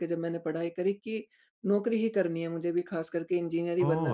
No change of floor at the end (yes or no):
yes